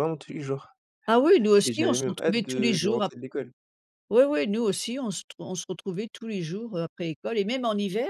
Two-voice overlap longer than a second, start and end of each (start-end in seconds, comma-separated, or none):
1.6-3.1